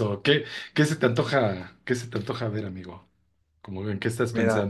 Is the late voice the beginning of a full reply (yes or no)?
yes